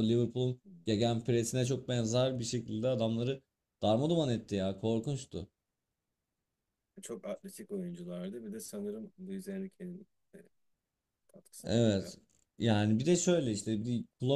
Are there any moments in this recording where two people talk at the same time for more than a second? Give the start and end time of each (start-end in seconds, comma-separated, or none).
none